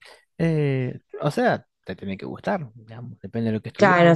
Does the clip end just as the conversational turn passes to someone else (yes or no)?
yes